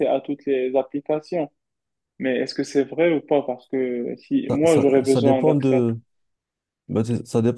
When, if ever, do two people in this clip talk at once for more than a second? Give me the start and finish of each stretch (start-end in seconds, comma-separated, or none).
4.5-6.0